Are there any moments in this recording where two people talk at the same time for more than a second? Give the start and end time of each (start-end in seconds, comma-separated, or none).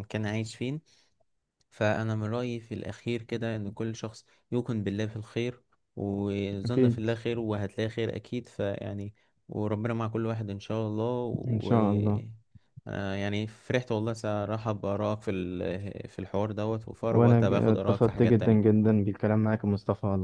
17.1-18.8